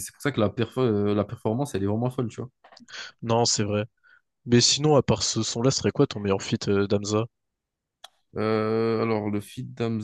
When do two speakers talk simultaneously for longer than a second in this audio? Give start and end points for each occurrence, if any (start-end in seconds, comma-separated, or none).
none